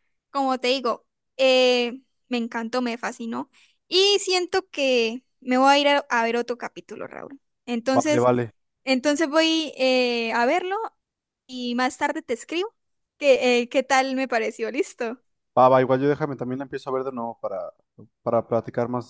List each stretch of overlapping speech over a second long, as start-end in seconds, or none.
none